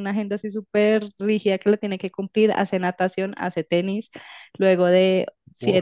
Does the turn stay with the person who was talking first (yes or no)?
yes